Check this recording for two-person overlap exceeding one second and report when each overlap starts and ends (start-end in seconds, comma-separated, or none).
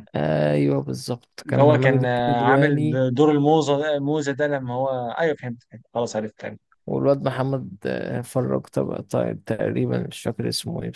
1.5-2.8